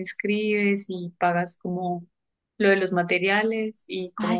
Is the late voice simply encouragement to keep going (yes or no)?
no